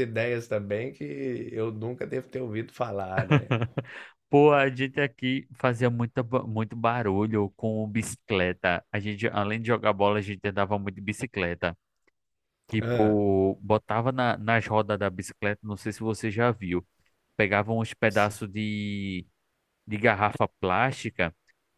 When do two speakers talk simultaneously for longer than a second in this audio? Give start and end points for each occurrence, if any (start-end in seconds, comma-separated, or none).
none